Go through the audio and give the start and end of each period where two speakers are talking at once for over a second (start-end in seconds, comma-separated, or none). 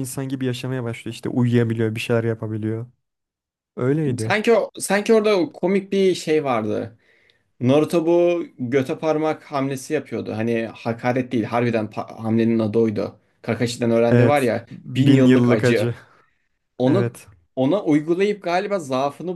14.1-15.9